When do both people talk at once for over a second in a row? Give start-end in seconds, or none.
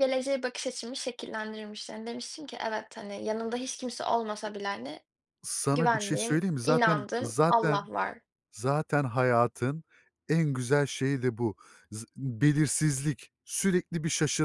5.7-7.9